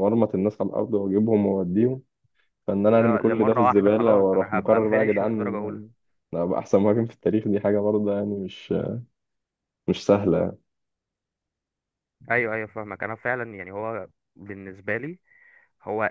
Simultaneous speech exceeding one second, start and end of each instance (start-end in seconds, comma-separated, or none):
3.0-5.8